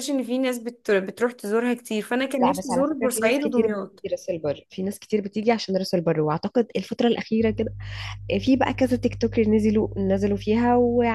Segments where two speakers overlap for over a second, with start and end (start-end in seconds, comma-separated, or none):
2.4-4.0